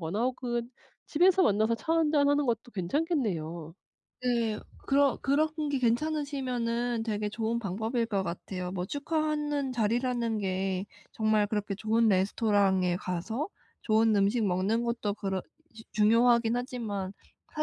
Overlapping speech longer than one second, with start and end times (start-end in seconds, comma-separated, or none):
none